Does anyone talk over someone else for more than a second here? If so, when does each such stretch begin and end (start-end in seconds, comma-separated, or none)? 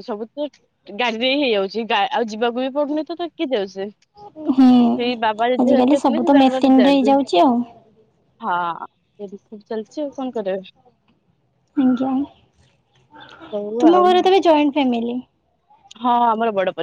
5.6-7.2